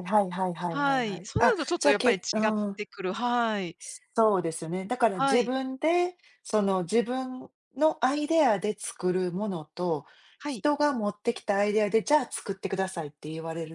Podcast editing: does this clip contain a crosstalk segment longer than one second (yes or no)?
yes